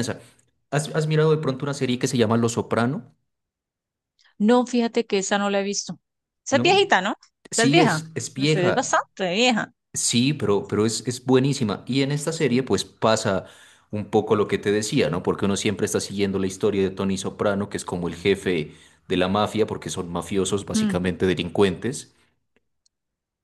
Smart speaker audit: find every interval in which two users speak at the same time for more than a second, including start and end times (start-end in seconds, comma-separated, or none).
7.5-9.0